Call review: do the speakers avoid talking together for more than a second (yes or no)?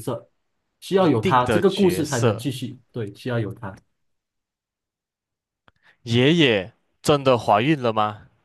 no